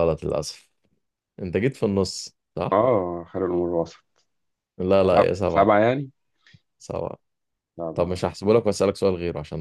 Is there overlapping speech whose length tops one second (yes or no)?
no